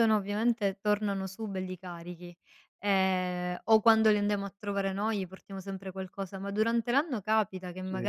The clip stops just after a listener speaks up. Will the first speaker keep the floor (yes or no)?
yes